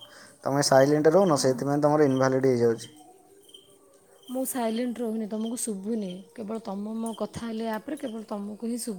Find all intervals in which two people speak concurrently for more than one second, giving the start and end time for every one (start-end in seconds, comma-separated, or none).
none